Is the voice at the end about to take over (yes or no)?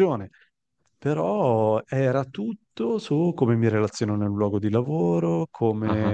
no